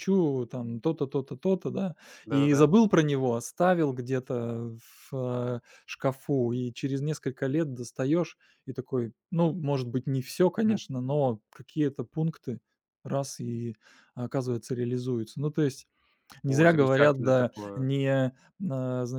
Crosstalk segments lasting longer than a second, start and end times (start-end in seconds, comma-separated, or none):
16.5-17.9